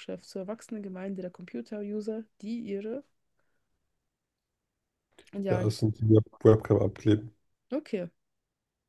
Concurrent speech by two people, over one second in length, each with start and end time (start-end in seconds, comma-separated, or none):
none